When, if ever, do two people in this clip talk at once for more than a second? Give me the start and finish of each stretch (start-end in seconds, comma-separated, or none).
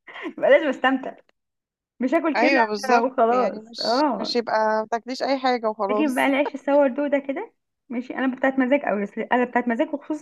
2.4-4.3